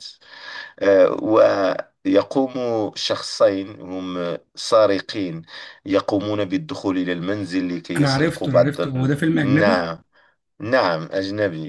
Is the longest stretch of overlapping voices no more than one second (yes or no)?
no